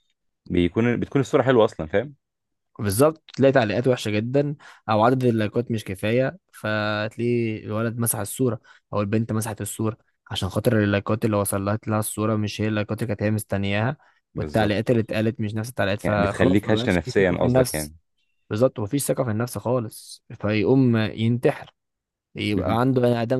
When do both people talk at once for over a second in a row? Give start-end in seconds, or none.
16.0-17.9